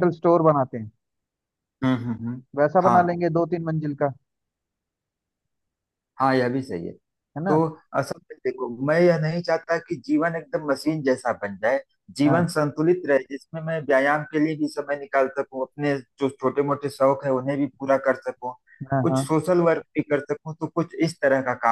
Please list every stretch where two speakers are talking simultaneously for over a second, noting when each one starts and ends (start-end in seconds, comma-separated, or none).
none